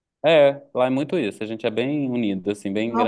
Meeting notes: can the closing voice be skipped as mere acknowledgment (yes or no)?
no